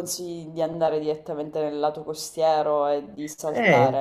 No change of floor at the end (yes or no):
no